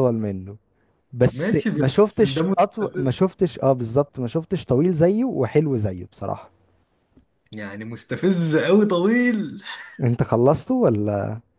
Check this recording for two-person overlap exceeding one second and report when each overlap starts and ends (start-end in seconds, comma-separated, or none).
1.3-3.2